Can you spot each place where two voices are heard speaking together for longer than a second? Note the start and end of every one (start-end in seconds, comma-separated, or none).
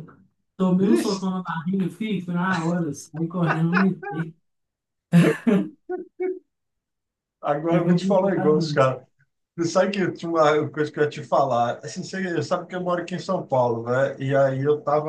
7.7-8.9